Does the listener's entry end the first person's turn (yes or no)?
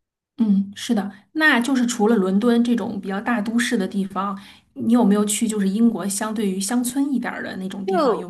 yes